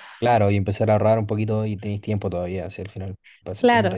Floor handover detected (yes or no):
yes